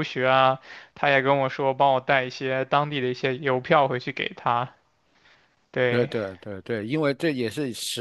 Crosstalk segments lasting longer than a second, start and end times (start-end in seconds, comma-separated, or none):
none